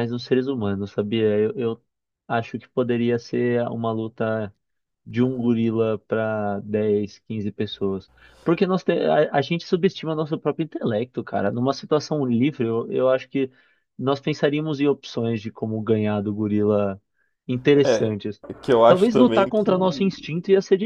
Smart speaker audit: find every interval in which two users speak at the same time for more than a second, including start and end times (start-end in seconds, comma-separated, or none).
18.9-20.1